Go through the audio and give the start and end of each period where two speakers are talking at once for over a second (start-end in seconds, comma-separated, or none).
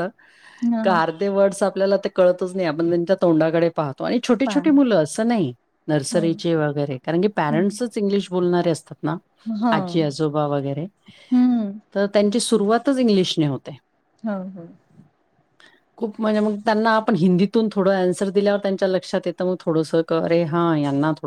none